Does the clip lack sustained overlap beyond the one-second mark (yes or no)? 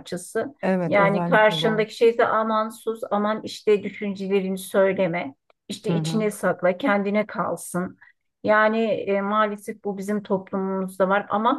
no